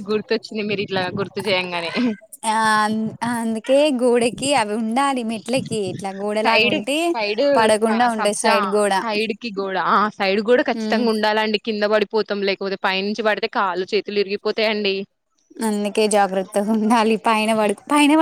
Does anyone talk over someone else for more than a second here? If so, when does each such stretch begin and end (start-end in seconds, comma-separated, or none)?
none